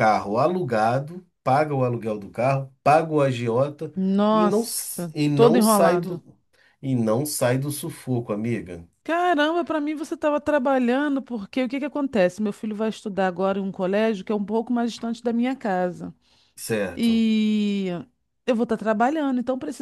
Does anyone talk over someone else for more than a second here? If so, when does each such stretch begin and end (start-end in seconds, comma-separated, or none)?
4.3-6.2